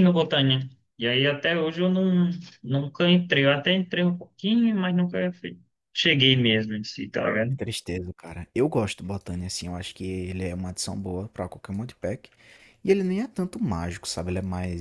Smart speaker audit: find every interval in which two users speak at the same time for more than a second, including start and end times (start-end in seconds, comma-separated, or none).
none